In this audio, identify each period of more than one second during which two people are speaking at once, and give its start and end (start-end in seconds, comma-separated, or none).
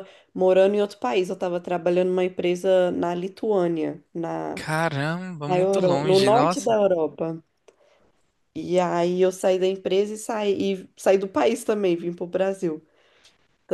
5.5-6.8